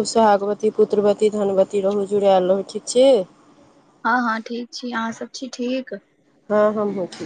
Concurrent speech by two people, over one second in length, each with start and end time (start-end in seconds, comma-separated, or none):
none